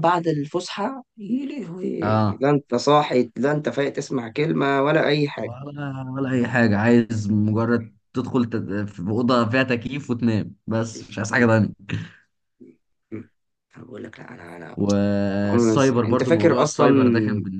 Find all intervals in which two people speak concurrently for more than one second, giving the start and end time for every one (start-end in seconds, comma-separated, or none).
15.4-16.9